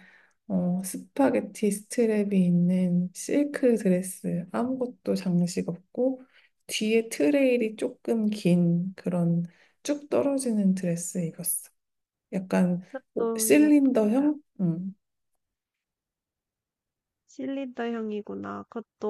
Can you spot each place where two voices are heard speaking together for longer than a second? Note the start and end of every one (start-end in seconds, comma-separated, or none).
12.9-14.3